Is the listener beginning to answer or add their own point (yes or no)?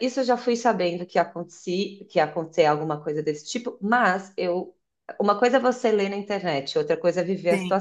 no